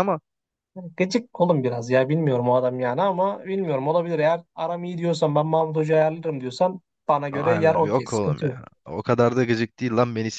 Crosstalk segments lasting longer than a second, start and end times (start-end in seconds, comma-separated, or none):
7.3-8.6